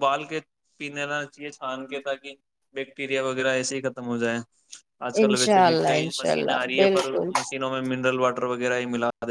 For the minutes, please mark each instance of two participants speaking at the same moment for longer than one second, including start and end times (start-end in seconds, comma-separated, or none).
5.2-7.3